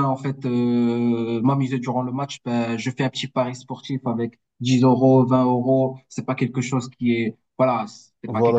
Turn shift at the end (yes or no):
yes